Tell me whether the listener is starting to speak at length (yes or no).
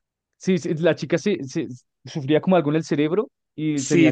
yes